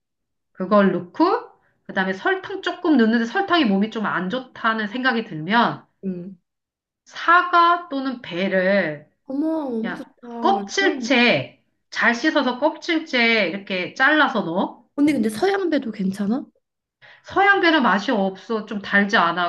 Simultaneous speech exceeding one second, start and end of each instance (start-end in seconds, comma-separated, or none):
9.8-11.2